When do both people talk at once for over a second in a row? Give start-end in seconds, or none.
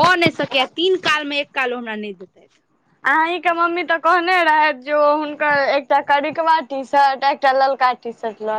none